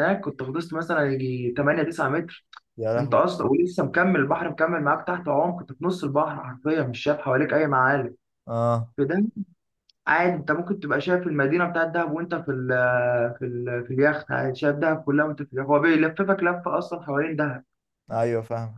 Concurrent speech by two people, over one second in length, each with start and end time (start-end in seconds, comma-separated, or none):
none